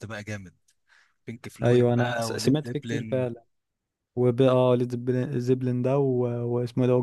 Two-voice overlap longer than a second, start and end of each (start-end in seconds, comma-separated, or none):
1.6-3.3